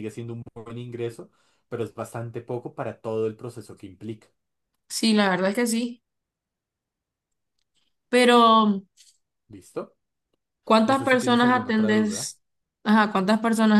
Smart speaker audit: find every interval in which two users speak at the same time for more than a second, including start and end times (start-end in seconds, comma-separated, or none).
10.8-12.3